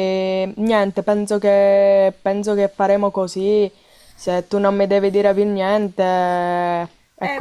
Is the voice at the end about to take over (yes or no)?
yes